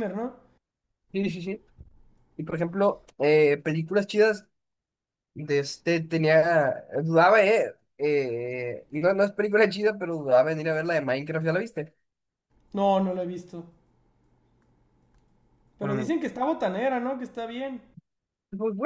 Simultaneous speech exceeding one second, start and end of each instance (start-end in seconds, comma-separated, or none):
none